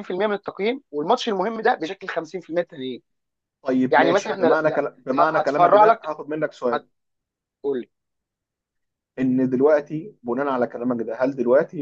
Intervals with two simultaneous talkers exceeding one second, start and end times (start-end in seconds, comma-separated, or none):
3.9-6.1